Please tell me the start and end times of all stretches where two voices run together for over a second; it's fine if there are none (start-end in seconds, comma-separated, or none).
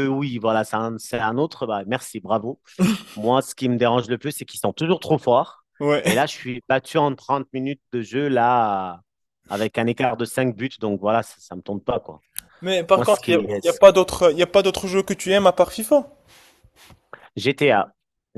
none